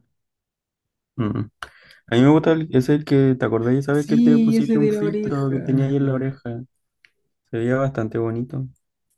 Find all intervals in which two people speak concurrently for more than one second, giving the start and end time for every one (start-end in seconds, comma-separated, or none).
3.9-5.6